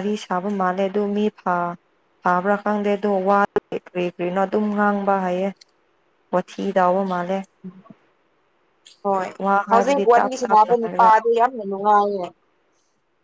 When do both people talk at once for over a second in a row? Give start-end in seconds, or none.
9.7-11.1